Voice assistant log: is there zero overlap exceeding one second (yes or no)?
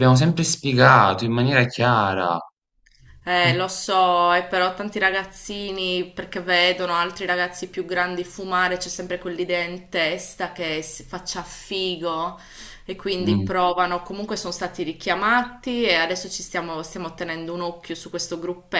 yes